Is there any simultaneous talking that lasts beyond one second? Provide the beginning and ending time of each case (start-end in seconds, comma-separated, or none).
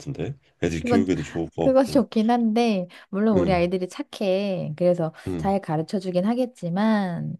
none